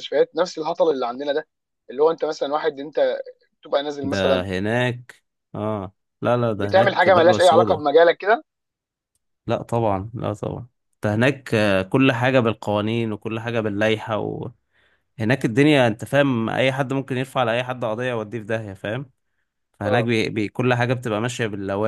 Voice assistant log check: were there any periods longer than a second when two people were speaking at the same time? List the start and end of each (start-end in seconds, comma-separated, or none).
6.6-7.8